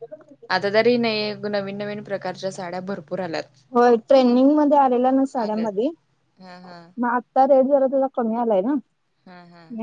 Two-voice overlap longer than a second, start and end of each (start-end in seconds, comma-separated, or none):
5.4-6.8